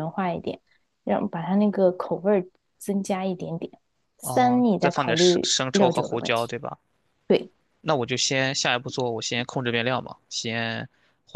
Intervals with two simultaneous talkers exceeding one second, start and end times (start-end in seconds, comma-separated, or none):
4.2-6.5